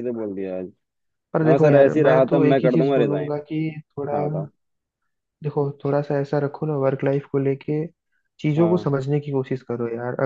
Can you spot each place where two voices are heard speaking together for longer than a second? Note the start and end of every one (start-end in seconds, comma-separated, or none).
1.5-3.3